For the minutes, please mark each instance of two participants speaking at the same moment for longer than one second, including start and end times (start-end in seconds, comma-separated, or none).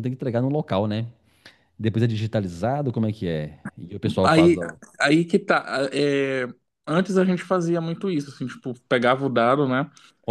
none